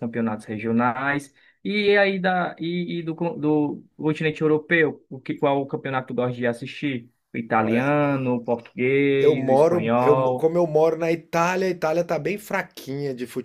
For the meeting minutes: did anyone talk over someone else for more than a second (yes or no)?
yes